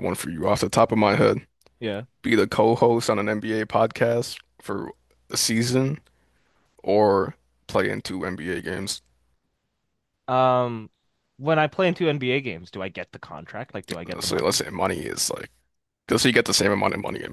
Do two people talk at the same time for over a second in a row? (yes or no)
no